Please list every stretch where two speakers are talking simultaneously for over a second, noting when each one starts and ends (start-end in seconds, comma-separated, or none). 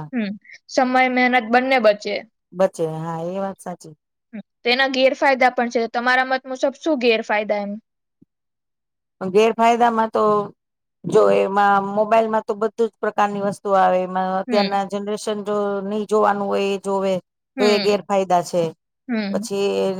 none